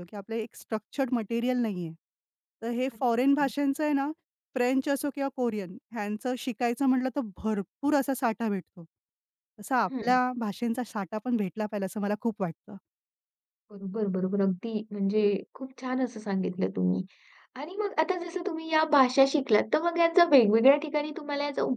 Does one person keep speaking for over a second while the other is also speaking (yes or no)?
no